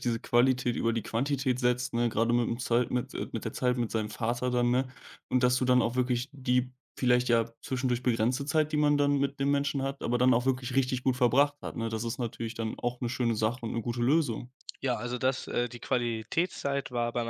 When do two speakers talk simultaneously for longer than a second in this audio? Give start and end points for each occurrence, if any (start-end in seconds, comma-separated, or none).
none